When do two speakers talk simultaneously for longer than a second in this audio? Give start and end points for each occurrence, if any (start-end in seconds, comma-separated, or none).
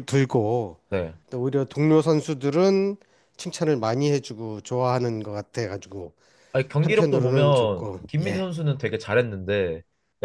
6.8-8.5